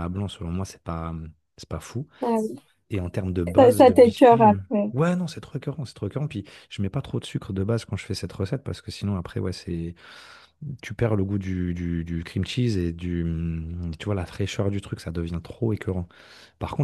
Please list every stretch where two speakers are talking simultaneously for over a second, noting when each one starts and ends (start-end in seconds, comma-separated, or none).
3.6-4.9